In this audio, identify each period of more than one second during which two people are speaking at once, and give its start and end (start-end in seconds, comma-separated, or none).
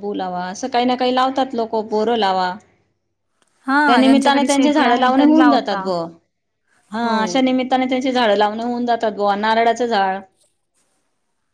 3.9-5.9